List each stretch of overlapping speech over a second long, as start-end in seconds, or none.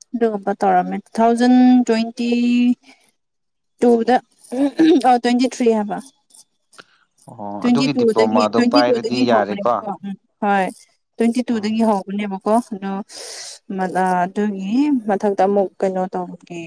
7.6-9.7